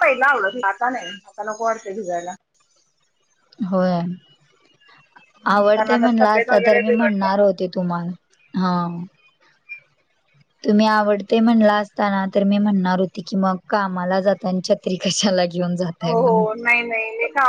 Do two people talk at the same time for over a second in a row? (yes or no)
yes